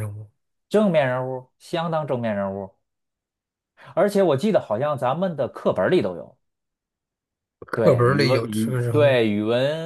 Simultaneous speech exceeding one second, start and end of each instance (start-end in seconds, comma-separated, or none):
7.7-9.2